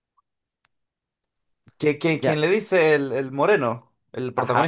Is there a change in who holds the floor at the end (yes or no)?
yes